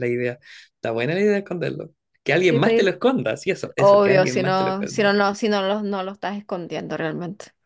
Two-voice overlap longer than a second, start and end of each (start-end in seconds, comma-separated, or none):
3.8-5.1